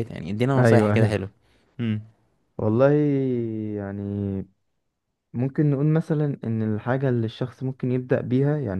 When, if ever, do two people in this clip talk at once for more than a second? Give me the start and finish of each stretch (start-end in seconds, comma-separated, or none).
none